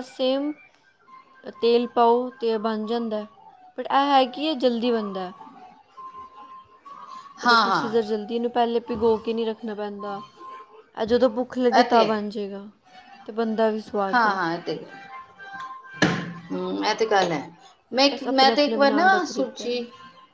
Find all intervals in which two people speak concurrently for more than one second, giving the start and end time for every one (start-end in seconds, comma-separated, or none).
18.1-19.7